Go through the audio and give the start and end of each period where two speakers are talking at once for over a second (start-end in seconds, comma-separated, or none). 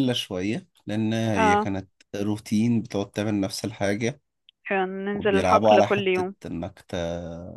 5.1-6.3